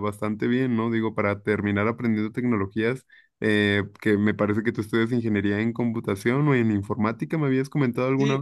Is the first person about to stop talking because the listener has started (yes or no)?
yes